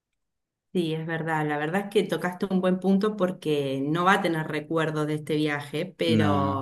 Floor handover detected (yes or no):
no